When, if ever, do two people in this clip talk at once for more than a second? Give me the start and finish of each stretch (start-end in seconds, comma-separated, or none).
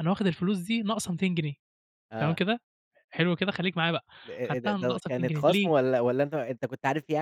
4.5-5.7